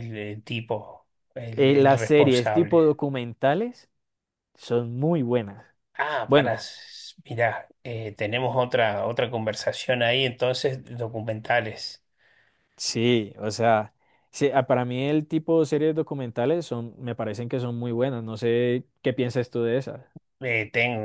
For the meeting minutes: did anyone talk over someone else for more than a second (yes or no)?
yes